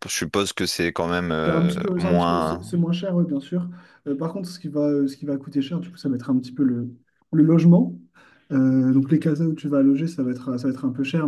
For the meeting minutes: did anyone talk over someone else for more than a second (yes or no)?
yes